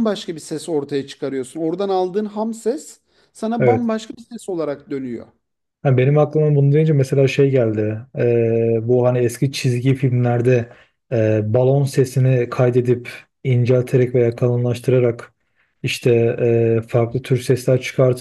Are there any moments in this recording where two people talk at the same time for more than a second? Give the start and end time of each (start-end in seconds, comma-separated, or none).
none